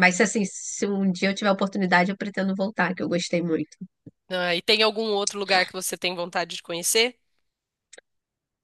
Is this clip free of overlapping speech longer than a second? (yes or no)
yes